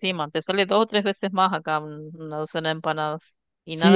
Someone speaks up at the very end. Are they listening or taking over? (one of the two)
taking over